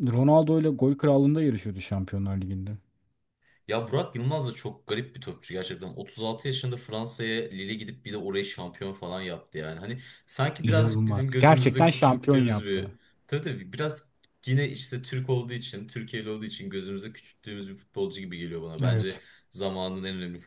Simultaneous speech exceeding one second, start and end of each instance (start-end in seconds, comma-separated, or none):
10.6-12.9